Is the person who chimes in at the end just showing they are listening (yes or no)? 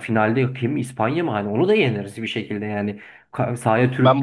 no